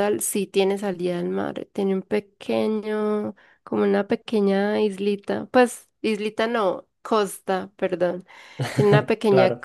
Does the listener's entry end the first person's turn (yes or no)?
no